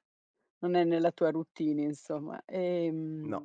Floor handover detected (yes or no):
no